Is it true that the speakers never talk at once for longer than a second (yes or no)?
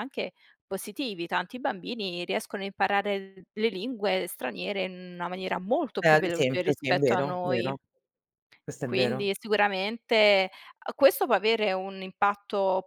no